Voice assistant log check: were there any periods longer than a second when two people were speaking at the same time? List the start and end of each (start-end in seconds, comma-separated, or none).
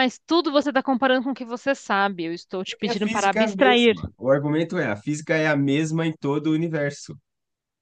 2.7-3.9